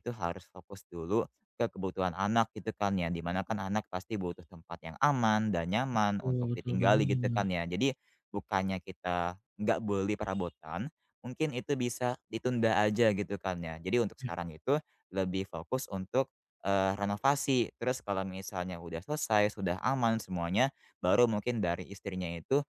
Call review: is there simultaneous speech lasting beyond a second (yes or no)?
yes